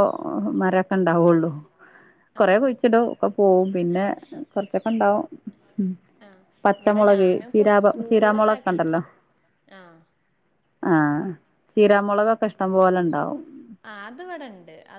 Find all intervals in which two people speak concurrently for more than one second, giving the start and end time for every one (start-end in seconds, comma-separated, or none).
6.8-9.0